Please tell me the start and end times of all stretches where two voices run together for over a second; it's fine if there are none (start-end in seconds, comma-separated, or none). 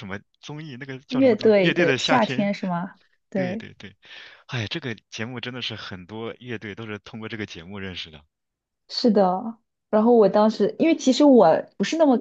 1.1-2.5